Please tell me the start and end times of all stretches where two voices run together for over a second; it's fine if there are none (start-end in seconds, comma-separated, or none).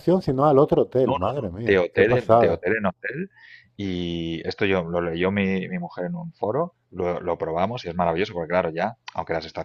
1.0-2.6